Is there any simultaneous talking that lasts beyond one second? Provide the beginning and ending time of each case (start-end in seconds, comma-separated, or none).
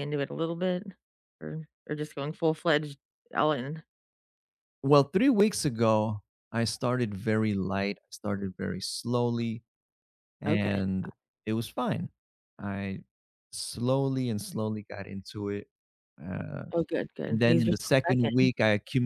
17.3-18.5